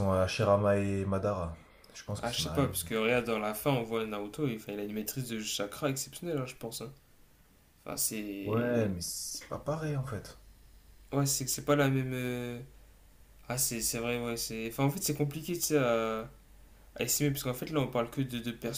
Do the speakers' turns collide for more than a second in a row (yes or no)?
no